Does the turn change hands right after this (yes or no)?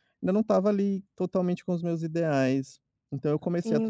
yes